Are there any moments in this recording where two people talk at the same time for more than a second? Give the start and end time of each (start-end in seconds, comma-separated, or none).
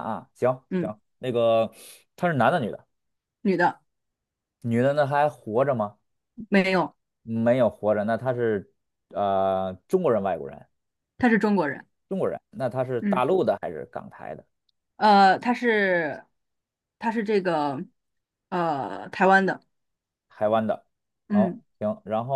none